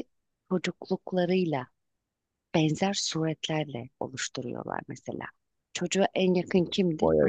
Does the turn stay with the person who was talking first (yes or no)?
yes